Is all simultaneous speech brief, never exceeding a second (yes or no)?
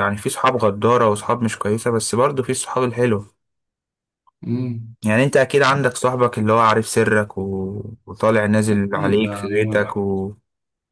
no